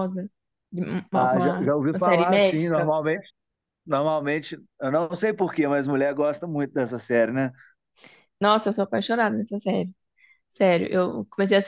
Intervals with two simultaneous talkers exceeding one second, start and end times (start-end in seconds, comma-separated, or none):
1.1-2.9